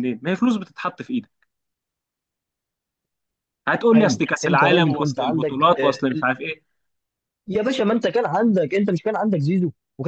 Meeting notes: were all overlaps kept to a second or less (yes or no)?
no